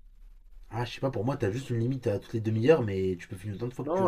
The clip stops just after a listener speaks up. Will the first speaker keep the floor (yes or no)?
no